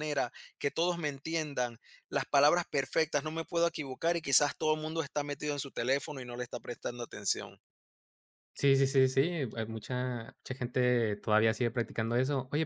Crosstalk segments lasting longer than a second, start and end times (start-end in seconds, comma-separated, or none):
none